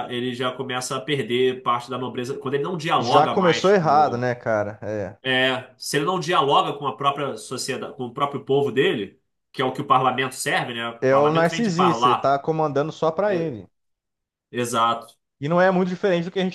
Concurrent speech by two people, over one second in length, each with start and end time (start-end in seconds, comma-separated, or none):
3.0-4.2, 11.0-12.4